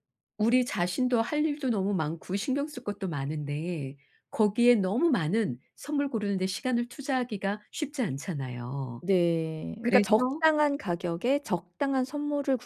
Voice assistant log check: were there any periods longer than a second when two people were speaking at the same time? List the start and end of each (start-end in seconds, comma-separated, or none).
none